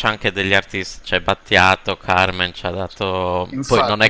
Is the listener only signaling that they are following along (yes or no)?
no